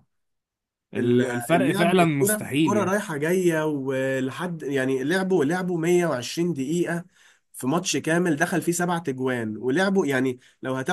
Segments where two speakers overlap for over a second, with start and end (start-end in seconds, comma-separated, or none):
0.9-3.0